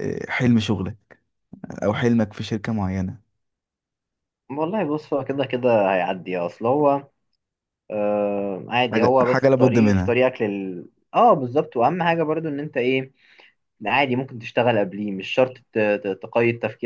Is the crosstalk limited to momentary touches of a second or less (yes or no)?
no